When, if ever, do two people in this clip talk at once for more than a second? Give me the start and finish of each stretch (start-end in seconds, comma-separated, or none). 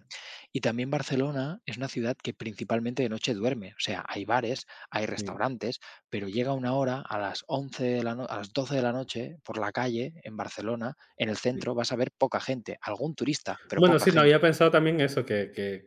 none